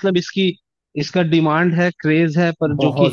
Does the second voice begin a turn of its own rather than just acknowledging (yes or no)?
no